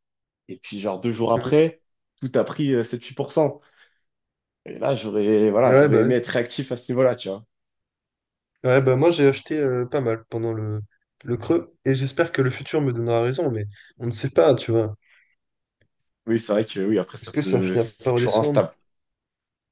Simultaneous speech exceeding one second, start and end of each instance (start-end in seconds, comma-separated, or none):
17.2-18.6